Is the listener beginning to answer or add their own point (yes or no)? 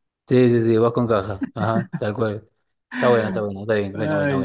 yes